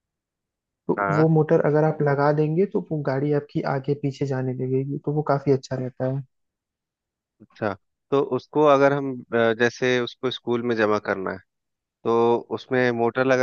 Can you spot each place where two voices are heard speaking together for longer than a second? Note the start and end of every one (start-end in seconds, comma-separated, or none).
none